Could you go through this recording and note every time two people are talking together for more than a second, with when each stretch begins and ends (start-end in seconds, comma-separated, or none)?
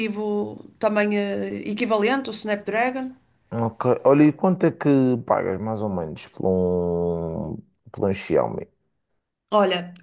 none